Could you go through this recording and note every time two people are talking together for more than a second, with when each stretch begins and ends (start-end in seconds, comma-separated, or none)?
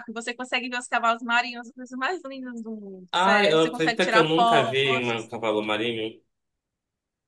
3.1-5.3